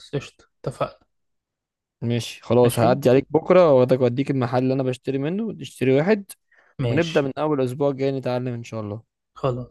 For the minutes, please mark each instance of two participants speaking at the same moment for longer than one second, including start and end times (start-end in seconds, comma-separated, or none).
none